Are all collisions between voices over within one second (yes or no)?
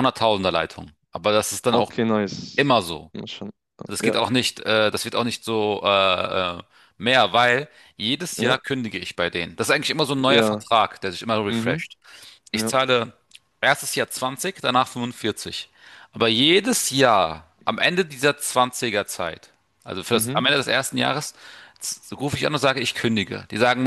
yes